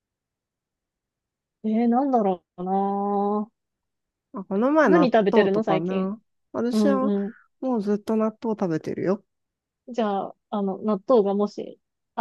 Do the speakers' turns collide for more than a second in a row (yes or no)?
yes